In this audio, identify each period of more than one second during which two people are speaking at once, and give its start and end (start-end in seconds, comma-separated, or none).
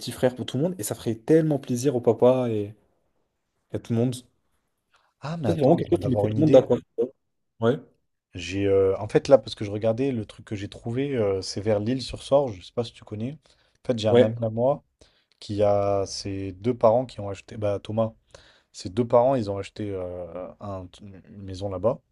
5.4-6.7